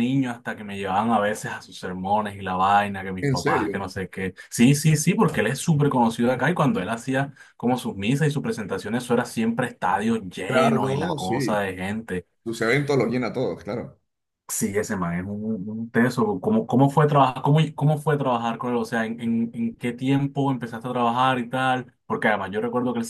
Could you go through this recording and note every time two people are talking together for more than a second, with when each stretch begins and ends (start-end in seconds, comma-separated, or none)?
10.4-11.7